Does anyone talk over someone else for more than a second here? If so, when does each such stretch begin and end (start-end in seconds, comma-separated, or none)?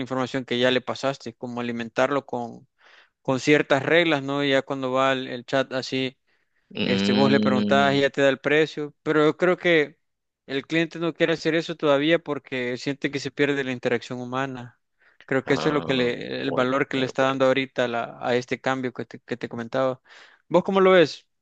6.8-8.0, 15.5-17.4